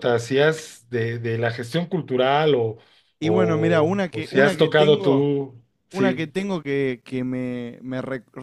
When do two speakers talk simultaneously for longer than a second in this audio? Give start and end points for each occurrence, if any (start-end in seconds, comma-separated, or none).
3.2-5.2